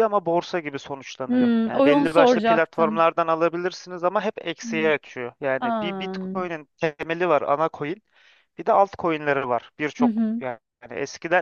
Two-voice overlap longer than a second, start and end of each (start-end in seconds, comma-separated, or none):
1.3-3.1